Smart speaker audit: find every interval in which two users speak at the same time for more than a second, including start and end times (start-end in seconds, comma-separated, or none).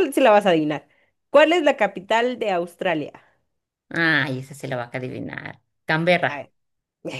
none